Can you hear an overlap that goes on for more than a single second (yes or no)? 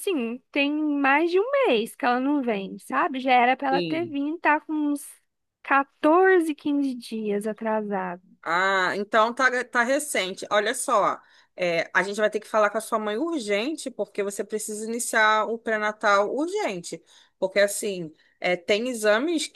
no